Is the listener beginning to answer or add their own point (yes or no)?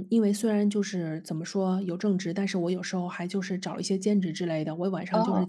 no